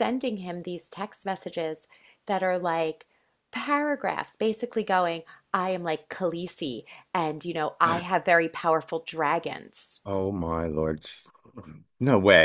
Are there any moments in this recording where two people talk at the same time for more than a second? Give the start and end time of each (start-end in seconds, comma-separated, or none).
none